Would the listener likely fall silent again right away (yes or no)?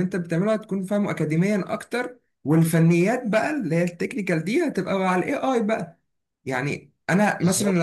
yes